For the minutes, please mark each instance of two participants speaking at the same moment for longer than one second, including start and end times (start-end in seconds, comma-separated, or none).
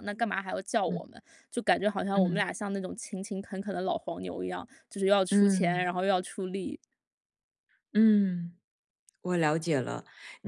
none